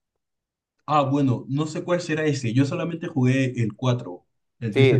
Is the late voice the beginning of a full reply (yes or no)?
yes